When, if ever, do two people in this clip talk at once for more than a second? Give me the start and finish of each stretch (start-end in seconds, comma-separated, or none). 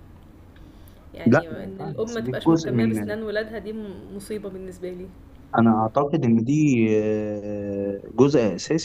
1.3-3.1